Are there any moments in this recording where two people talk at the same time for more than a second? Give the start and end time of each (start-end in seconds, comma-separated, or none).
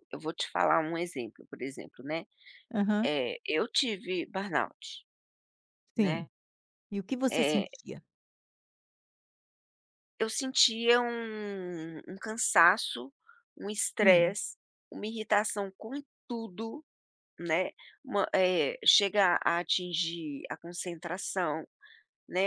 none